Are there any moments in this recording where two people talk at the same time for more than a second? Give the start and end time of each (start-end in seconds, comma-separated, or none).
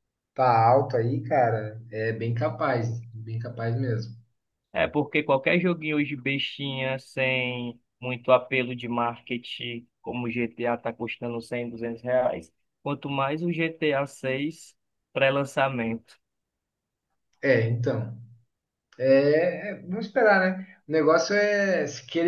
none